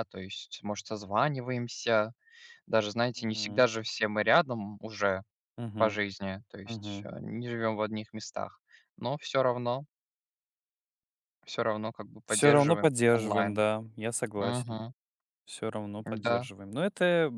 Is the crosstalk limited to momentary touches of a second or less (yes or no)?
no